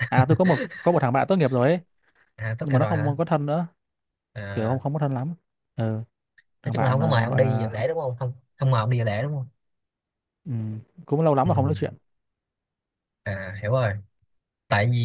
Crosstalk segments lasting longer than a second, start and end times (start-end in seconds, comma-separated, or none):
6.7-7.8